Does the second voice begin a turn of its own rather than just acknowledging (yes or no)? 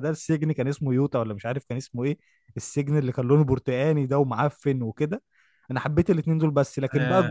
no